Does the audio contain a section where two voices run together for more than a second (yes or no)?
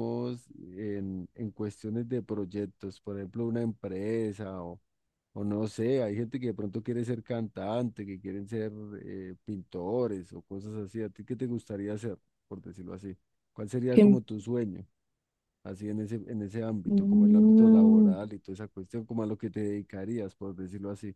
yes